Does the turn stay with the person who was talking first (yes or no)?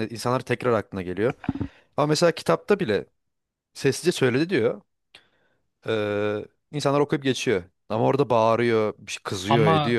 no